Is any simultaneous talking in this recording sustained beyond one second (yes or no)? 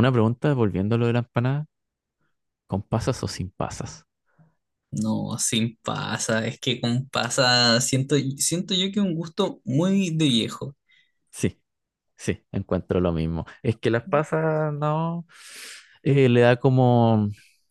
no